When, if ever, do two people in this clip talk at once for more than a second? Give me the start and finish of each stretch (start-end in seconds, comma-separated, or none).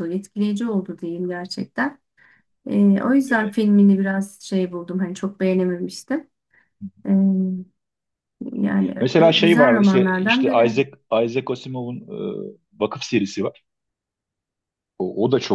9.0-10.8